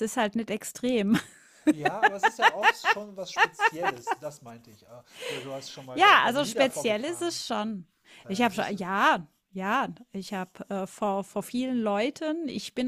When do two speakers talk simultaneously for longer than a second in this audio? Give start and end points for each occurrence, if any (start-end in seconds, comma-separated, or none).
5.9-7.3